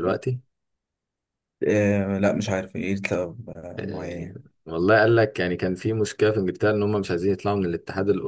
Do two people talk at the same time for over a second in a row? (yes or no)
no